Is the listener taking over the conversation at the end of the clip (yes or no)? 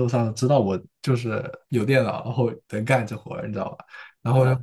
no